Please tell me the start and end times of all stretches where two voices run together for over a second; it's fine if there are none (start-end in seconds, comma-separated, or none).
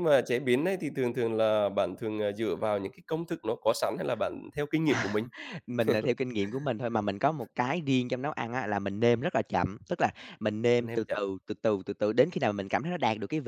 none